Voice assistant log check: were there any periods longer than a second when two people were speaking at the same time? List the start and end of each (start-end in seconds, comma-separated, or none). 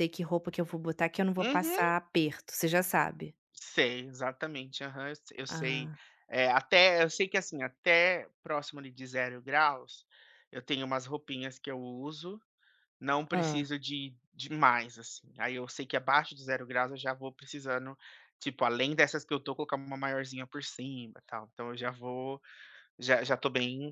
none